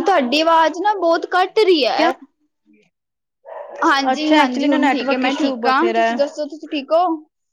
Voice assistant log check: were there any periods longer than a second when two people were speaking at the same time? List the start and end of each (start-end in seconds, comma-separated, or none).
4.1-6.1